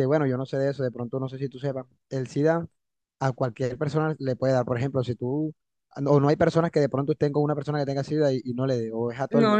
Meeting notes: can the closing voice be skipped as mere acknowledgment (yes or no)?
no